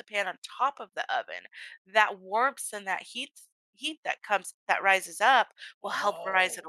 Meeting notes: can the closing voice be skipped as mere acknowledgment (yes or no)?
yes